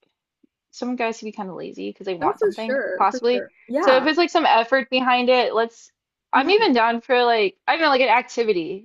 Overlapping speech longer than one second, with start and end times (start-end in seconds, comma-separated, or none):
2.2-4.0